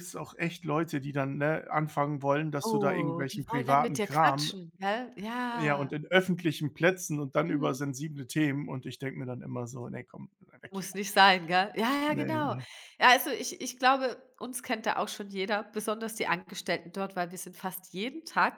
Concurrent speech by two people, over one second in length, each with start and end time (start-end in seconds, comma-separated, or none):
2.6-4.5